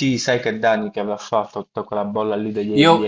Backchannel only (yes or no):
no